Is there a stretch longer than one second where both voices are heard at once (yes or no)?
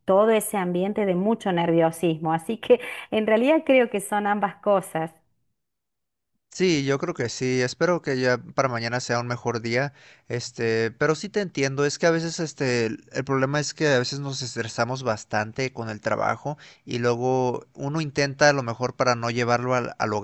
no